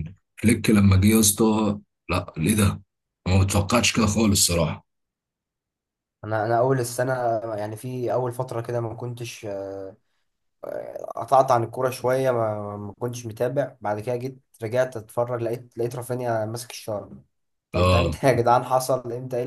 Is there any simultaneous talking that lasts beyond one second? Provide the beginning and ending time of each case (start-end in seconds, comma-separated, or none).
none